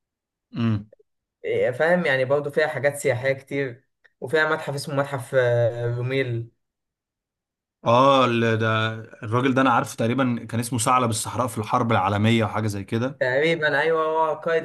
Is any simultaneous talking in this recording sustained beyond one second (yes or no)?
no